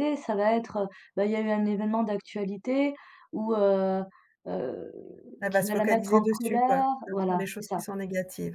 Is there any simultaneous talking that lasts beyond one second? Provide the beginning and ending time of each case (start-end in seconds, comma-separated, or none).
5.5-7.8